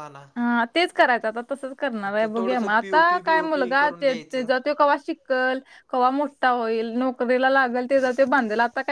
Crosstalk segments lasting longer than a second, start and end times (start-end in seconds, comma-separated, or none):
2.0-4.5